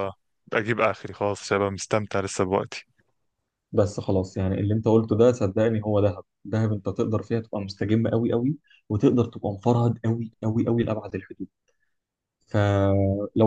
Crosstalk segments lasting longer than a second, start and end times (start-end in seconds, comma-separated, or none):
none